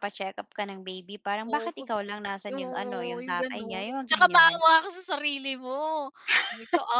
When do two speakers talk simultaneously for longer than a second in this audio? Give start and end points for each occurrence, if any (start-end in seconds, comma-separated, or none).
2.5-4.5